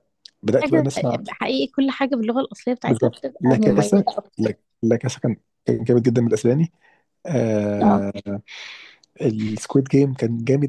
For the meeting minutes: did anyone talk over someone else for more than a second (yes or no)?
yes